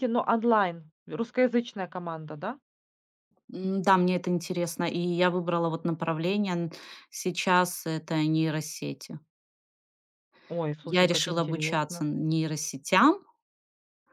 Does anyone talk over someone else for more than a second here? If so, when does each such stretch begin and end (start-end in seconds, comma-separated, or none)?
10.8-12.0